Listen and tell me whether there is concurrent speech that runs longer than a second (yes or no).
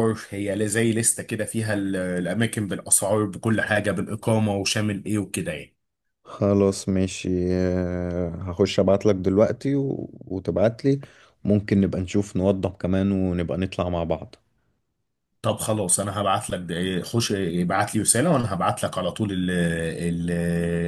no